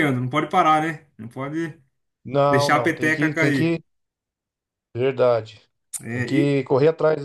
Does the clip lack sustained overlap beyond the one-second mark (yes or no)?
no